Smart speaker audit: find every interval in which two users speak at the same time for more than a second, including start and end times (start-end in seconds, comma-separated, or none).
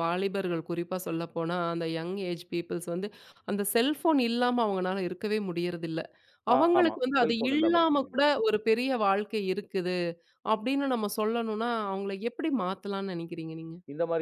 6.6-8.2